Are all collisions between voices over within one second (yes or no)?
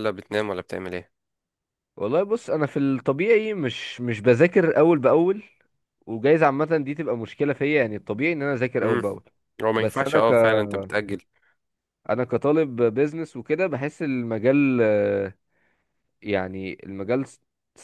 yes